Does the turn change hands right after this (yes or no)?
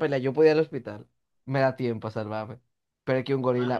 no